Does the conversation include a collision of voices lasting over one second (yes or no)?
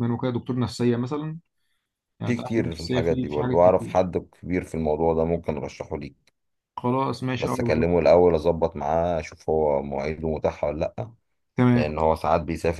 yes